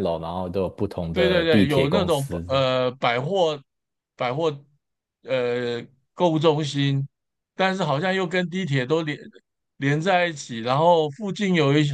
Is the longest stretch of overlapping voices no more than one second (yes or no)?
no